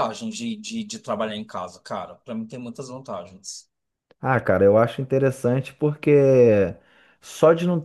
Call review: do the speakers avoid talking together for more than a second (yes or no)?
yes